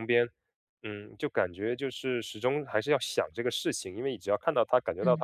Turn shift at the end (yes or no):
no